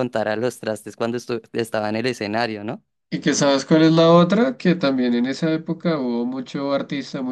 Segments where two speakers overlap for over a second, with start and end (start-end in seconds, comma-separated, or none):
none